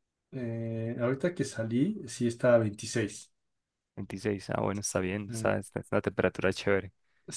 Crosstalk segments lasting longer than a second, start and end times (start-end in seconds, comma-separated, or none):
none